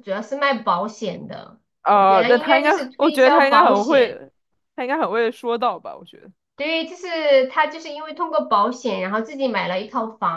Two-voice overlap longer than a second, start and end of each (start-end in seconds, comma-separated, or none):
1.8-4.2